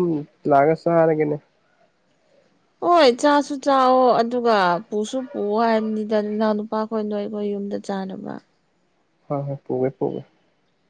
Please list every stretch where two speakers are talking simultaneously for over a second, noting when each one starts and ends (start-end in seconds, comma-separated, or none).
none